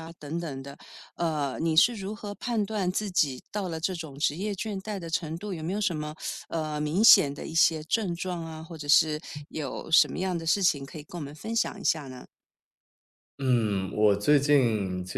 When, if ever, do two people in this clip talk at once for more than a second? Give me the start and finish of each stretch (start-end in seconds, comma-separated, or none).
none